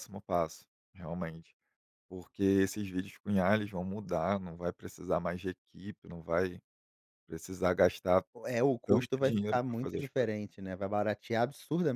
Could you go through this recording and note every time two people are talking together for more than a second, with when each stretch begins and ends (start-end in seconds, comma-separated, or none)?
8.9-10.4